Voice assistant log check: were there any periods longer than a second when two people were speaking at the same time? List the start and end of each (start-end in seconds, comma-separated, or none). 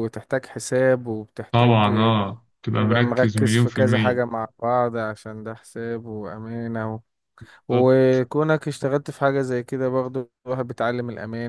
2.8-4.2